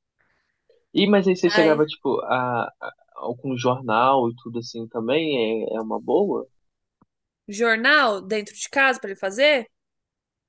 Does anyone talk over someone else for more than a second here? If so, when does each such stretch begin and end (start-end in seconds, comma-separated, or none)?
none